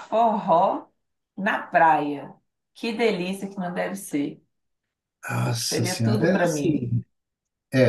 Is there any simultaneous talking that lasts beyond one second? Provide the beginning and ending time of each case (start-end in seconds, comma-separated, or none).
5.7-6.9